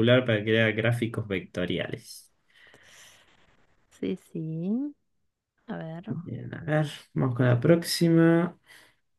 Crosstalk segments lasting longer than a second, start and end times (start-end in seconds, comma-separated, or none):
none